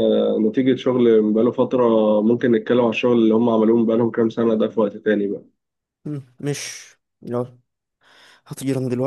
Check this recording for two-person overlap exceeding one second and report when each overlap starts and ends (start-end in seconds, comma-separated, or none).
none